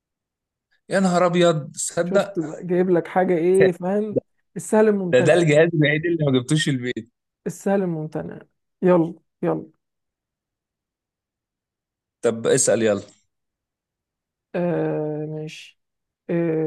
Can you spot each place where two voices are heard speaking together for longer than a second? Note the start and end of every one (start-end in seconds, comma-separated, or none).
none